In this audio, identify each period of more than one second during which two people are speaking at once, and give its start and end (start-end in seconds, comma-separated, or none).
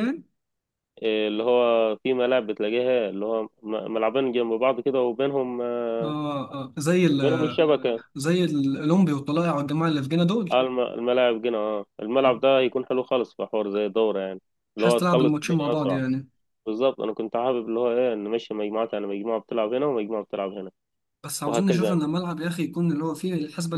14.8-16.0